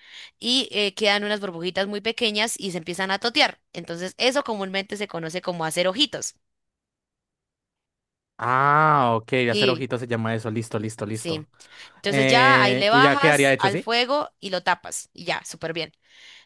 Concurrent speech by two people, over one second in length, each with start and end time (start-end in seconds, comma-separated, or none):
12.1-13.9